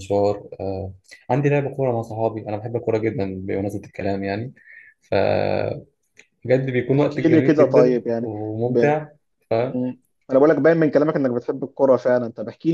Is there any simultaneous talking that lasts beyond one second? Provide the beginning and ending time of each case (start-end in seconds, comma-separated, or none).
6.9-9.0